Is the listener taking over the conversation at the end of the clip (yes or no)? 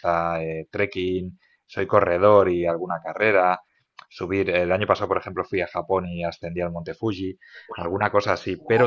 no